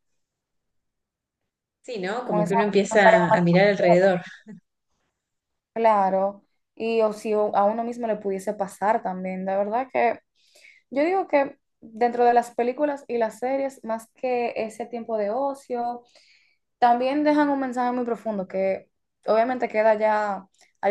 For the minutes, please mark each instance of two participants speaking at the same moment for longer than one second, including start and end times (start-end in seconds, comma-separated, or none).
2.2-4.0